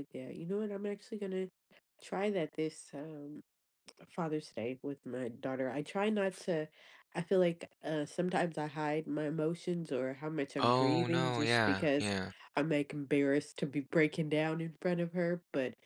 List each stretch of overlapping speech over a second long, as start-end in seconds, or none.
10.6-12.1